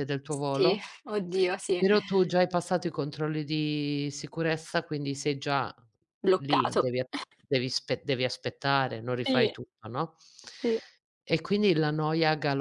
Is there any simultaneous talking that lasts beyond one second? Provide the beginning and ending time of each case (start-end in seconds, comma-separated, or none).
none